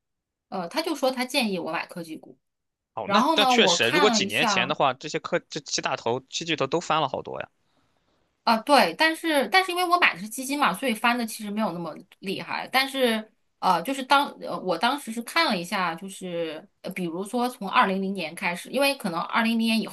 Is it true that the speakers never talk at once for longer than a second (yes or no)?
no